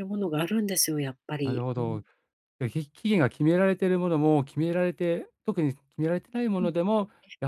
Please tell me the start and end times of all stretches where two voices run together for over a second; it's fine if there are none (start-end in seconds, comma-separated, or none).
none